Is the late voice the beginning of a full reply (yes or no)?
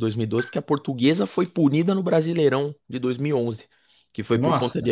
no